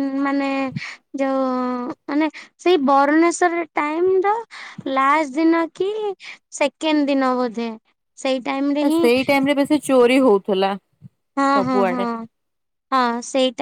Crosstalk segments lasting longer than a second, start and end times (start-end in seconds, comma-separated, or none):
none